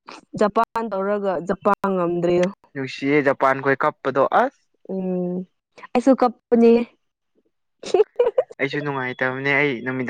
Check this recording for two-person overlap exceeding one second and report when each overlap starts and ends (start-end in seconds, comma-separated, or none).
none